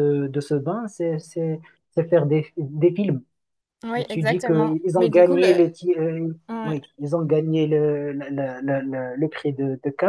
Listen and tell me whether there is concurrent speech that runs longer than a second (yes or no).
yes